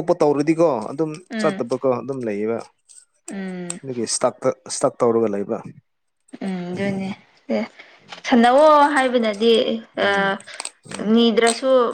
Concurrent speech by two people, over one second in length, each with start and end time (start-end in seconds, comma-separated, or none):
none